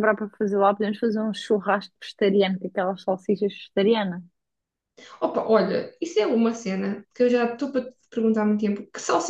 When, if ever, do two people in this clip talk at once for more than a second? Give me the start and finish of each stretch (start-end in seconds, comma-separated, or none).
none